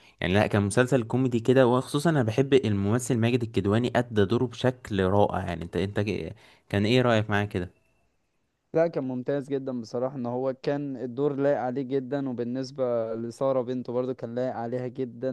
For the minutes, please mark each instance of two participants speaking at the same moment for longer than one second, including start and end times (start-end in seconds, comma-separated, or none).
none